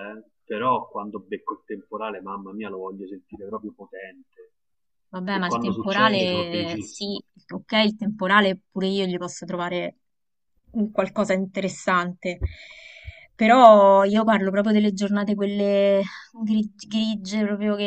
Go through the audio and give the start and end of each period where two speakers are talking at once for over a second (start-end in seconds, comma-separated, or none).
5.3-7.2